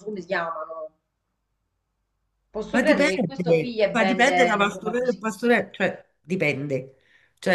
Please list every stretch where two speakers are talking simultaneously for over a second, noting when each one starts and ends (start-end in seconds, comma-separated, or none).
2.7-5.2